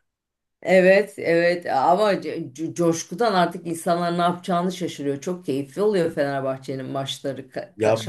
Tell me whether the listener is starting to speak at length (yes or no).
yes